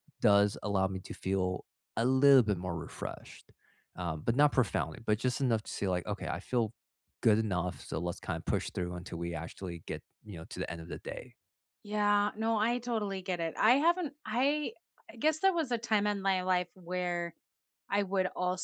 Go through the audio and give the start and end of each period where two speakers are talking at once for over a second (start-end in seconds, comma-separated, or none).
none